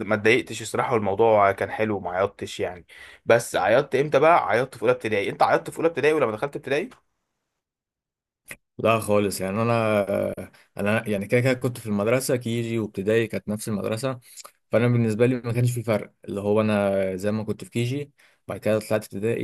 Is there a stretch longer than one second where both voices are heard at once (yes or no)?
no